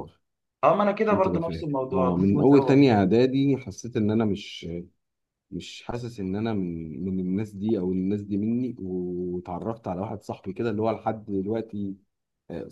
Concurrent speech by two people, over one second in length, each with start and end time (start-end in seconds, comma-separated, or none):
1.1-3.0